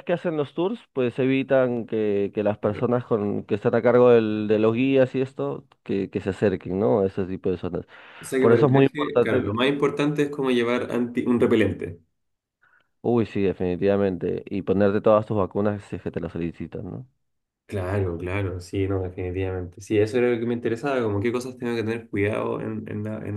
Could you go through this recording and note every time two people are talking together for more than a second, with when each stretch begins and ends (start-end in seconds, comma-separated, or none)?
8.4-9.6